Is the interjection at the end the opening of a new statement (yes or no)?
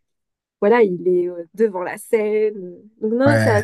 yes